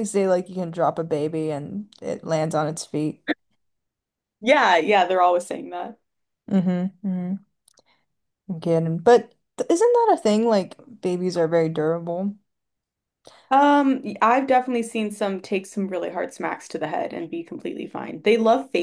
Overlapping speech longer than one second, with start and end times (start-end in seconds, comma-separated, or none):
none